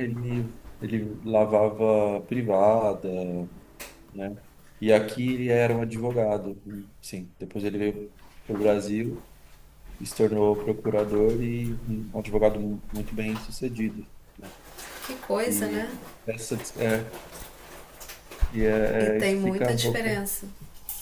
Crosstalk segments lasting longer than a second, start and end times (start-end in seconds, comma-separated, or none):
19.0-20.2